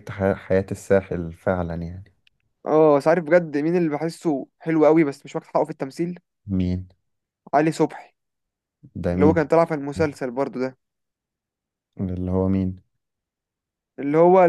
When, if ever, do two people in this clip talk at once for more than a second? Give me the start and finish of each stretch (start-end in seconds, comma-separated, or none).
none